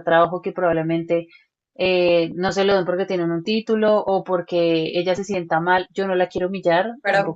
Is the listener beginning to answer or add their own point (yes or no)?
yes